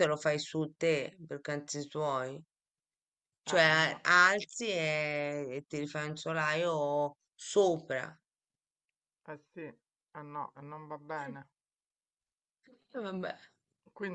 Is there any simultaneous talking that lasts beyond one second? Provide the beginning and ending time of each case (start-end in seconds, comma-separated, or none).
none